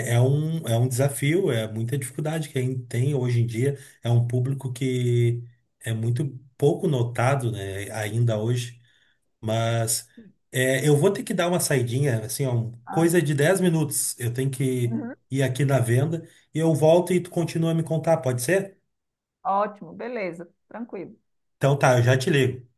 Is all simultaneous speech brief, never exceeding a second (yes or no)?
yes